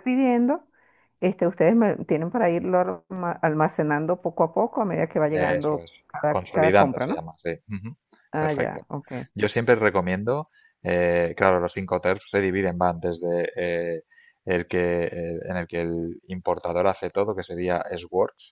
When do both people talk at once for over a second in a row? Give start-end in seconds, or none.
5.3-7.2